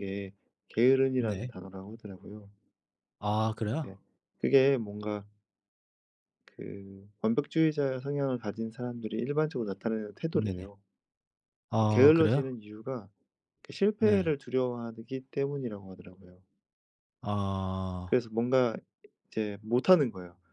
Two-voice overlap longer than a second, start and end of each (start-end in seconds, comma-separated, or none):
none